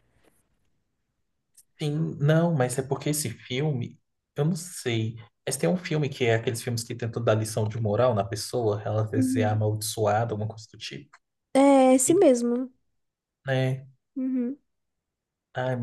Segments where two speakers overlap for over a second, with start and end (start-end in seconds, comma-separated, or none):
none